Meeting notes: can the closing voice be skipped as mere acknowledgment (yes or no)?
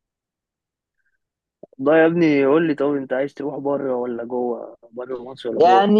no